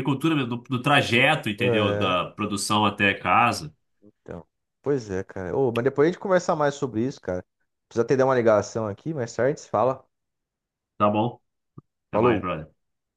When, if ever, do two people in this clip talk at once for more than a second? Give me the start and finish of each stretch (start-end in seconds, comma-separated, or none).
none